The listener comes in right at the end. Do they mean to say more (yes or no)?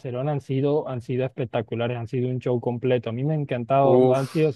no